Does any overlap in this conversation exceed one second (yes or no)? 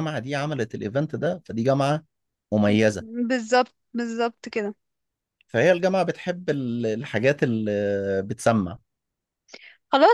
no